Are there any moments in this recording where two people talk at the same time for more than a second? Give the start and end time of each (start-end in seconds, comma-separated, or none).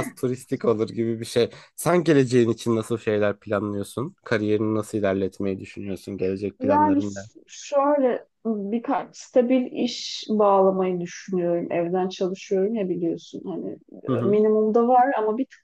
none